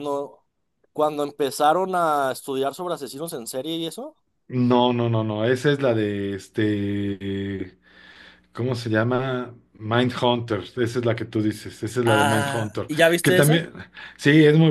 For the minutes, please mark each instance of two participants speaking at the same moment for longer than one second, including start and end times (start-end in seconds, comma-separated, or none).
12.0-13.7